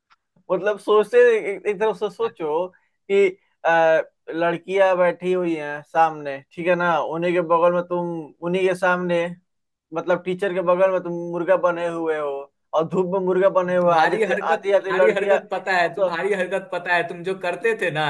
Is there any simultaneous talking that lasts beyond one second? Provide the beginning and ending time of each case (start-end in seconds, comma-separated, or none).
13.8-15.4